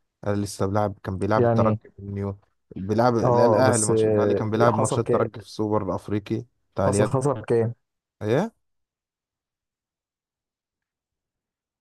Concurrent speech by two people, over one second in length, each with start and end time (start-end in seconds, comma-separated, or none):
3.2-5.3